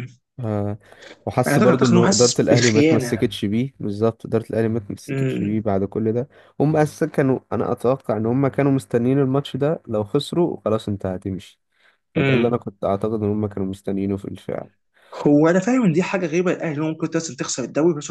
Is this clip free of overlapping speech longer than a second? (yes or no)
no